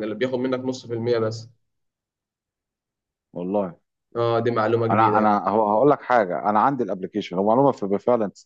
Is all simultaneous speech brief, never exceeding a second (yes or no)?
yes